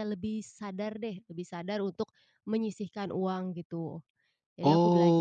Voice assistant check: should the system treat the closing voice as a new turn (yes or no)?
yes